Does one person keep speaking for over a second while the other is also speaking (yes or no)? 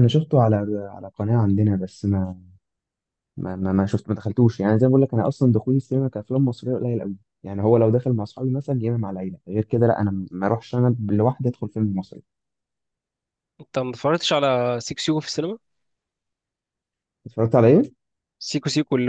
no